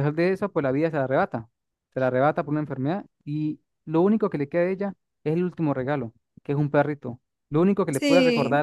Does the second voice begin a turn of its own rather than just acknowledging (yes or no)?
no